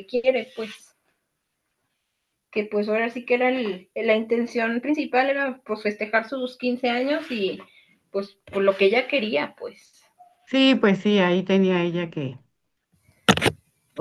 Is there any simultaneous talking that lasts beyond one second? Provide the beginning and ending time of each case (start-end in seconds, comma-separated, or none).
none